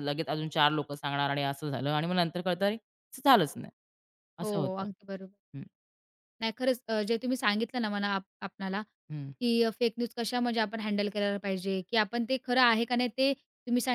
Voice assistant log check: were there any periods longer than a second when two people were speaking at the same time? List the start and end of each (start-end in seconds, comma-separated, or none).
none